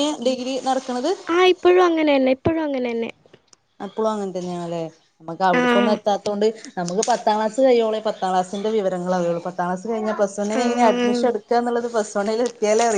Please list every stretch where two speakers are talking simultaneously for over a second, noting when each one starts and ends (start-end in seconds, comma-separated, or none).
none